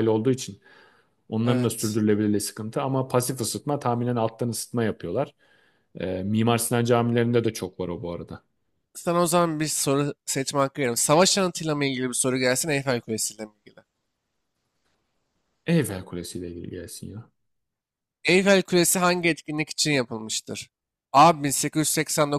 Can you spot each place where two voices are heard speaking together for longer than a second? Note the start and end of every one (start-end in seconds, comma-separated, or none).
none